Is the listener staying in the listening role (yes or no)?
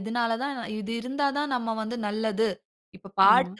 yes